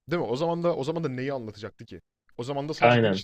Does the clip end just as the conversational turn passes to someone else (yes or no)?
no